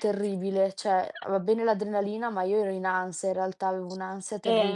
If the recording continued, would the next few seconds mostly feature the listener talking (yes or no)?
yes